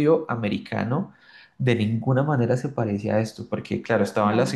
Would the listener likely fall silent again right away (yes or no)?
yes